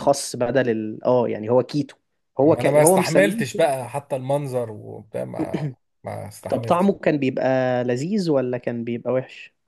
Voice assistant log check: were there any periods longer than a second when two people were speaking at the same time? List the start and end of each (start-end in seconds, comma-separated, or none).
2.4-3.7